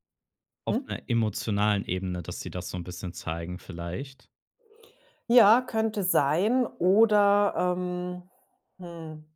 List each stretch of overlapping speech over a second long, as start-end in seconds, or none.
none